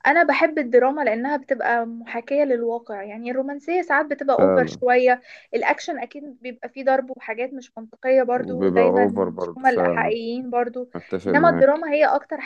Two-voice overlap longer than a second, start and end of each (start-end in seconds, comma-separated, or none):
8.3-10.1